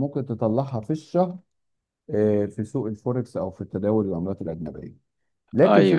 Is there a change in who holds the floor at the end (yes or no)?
no